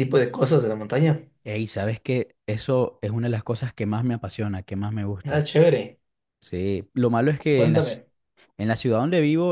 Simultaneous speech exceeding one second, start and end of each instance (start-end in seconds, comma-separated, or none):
none